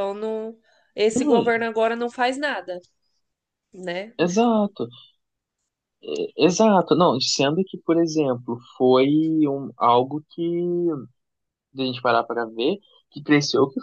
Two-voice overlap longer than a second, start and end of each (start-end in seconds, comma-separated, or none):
none